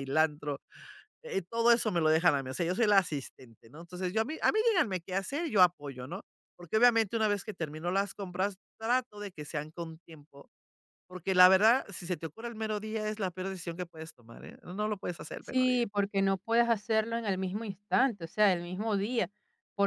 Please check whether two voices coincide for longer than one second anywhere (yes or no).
no